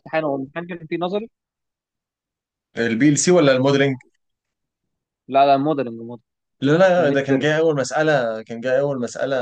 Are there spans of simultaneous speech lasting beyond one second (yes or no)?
no